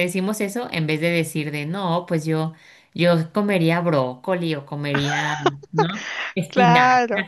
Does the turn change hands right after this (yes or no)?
yes